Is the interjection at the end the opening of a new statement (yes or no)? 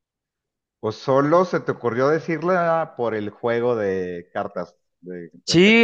yes